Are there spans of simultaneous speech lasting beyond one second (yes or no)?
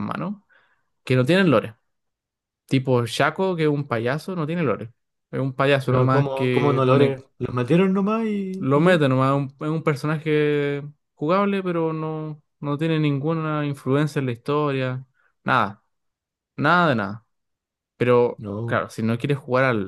yes